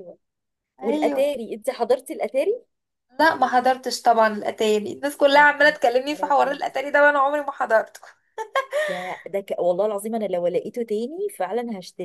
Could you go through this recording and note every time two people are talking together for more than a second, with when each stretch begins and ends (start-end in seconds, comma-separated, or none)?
5.3-6.6